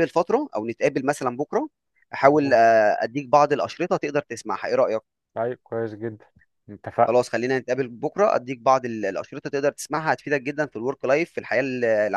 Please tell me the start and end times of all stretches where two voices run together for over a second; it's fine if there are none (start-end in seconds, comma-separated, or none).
none